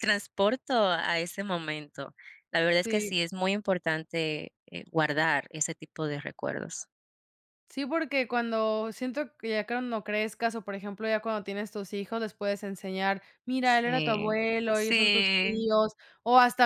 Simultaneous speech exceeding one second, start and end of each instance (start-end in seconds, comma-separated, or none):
13.6-15.7